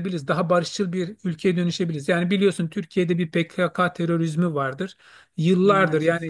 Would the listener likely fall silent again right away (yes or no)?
yes